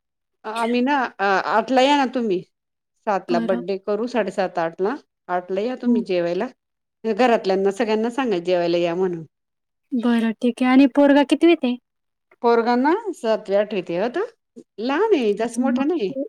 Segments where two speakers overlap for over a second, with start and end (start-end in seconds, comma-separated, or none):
none